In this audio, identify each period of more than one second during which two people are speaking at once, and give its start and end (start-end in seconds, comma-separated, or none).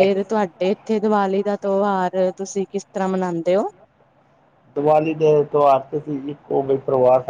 none